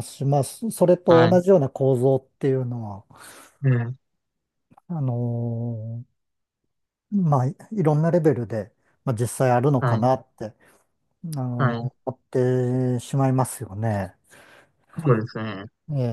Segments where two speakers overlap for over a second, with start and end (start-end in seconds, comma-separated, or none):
none